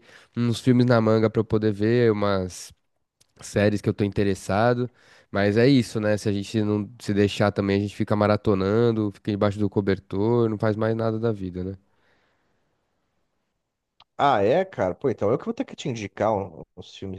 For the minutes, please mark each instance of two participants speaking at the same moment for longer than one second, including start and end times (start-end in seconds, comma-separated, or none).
none